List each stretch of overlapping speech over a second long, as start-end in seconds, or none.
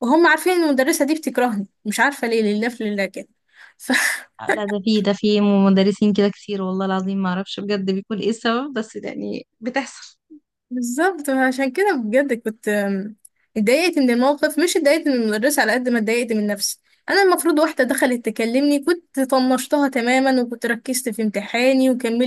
none